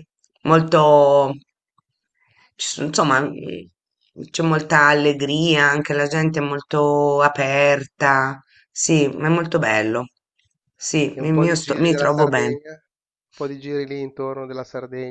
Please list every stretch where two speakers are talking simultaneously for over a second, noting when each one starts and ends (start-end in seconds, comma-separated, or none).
11.1-12.6